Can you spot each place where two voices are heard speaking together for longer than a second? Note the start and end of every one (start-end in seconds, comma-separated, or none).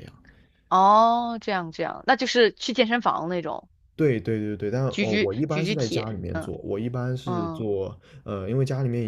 4.9-6.5